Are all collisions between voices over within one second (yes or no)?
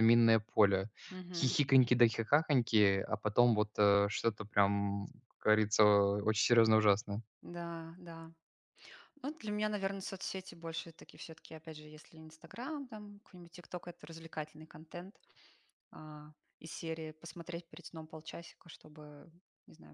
yes